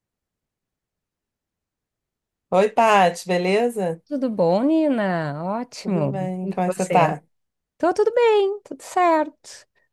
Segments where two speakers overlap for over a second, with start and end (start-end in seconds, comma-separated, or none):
5.8-7.2